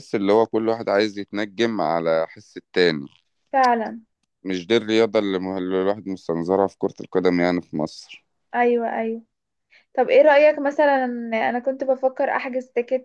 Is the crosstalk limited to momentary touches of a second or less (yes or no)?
yes